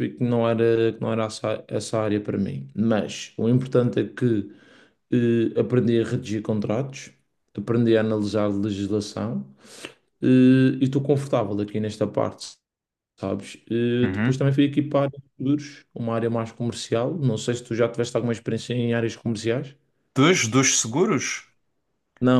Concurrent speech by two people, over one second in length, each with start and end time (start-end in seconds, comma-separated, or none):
none